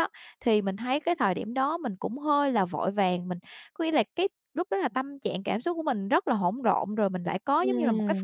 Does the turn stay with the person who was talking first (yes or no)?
no